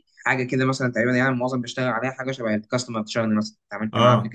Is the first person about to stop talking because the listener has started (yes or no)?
yes